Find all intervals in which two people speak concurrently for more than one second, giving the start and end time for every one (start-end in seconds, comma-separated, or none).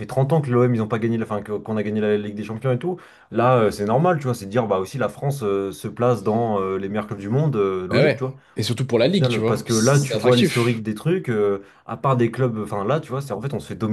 9.0-10.8